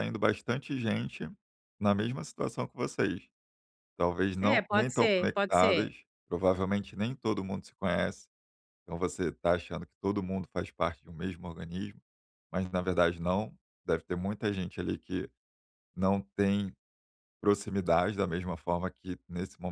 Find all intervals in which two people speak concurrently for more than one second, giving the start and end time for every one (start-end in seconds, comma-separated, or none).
4.4-5.9